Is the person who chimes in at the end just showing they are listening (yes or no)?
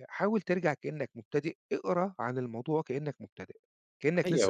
no